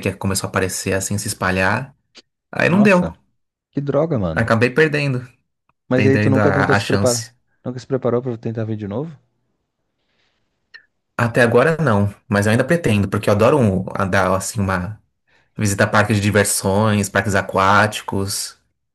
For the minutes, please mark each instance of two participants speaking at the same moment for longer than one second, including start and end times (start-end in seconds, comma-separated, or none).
5.9-7.3